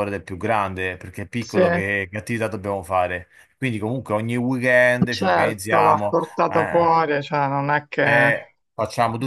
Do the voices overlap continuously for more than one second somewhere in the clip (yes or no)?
yes